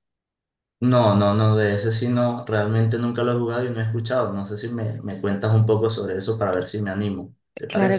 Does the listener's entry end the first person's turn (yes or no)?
yes